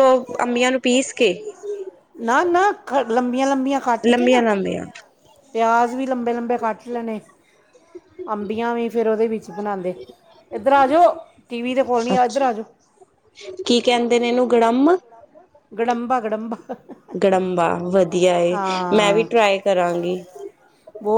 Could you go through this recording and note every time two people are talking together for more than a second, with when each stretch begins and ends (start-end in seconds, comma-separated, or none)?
none